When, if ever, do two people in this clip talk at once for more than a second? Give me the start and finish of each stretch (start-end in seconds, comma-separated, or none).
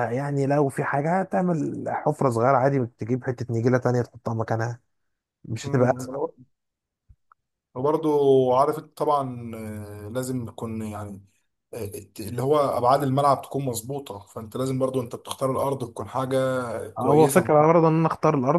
none